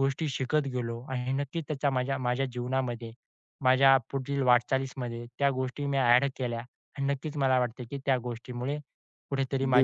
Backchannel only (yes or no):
yes